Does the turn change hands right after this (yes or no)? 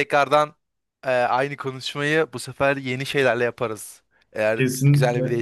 yes